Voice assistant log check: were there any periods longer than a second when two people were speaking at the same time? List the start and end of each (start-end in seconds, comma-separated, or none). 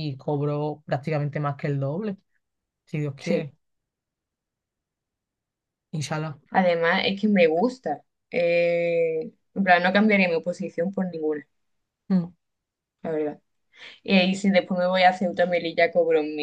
none